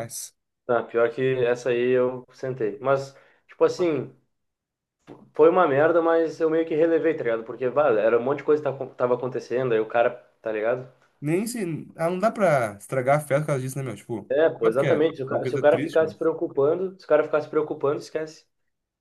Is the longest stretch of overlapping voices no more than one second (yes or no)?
no